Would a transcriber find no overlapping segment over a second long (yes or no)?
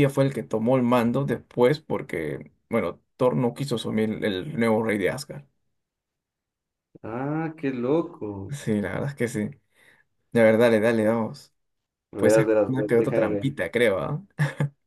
no